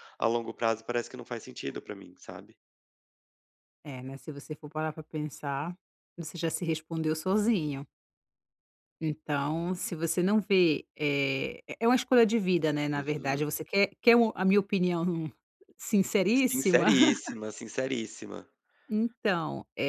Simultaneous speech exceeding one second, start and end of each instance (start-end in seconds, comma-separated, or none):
none